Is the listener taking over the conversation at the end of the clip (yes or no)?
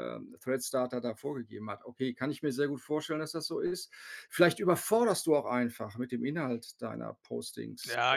yes